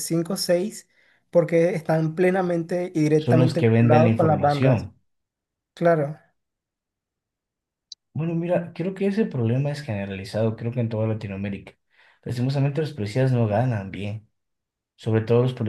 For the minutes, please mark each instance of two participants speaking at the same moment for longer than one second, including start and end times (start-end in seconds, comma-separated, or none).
3.2-4.9